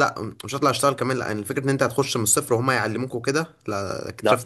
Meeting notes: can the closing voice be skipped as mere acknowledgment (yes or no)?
yes